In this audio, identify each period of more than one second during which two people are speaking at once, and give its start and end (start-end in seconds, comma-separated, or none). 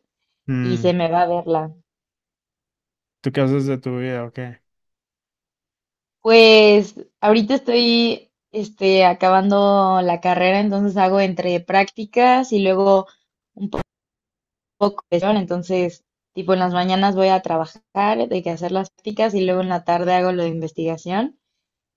none